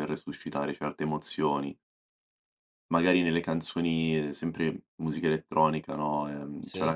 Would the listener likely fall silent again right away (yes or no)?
yes